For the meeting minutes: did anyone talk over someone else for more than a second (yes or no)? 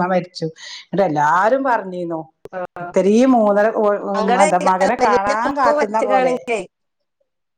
yes